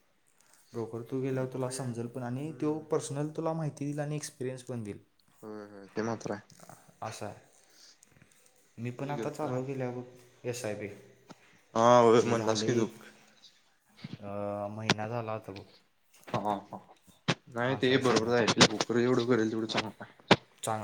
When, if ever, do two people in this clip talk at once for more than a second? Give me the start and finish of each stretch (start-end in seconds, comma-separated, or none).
1.3-2.8